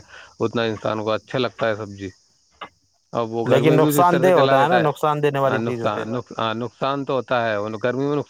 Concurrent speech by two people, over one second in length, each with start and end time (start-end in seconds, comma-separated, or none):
3.5-6.0